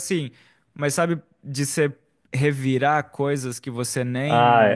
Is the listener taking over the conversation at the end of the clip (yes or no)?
yes